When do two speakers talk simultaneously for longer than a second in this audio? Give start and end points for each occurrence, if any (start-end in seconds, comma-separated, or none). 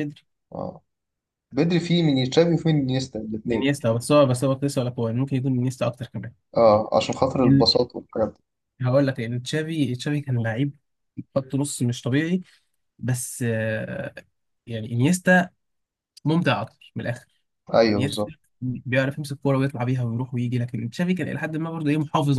none